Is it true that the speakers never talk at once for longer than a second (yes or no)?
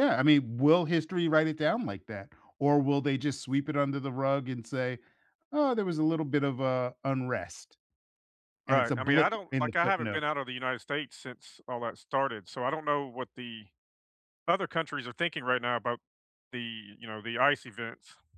no